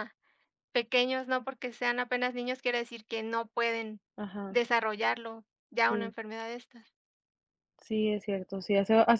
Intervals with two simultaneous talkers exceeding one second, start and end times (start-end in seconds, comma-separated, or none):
none